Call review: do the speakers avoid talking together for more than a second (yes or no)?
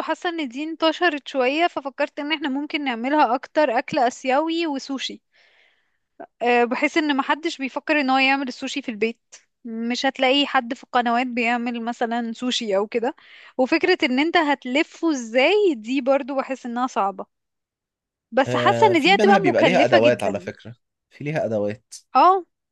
no